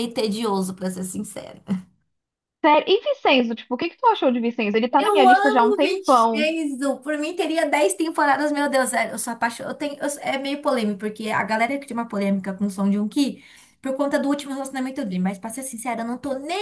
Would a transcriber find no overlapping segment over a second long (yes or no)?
no